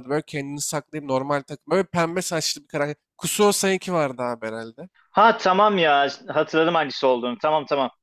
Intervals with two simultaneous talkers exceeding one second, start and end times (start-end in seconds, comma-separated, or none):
none